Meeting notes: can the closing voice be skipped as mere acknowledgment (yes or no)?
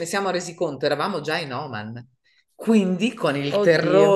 yes